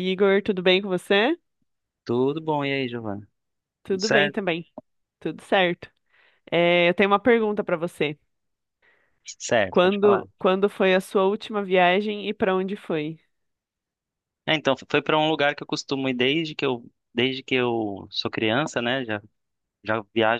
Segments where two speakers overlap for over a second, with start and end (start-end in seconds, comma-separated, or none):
none